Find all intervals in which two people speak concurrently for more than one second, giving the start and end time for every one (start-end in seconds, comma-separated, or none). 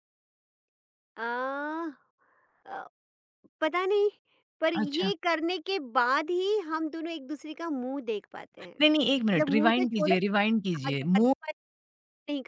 8.8-10.1